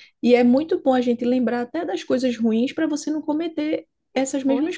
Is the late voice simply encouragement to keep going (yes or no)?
no